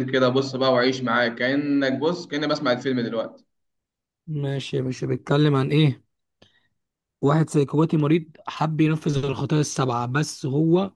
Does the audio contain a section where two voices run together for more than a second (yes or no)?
no